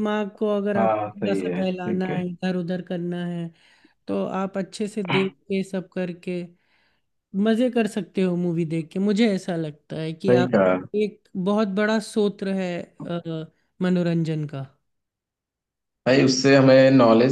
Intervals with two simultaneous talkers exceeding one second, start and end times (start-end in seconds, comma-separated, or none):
0.8-2.2